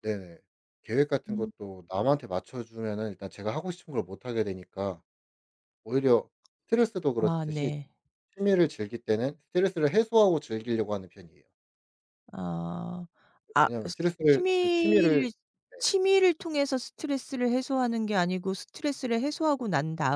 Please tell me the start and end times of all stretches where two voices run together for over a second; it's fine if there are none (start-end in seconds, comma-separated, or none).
13.6-15.3